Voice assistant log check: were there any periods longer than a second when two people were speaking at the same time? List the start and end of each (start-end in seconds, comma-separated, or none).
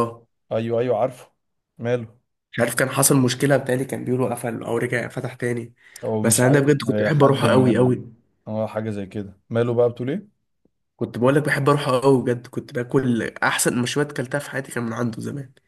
6.2-8.1